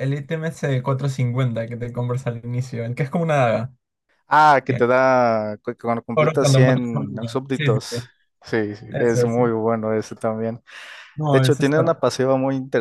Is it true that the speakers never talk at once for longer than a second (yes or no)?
no